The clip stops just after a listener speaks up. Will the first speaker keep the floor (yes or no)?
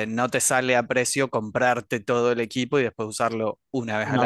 no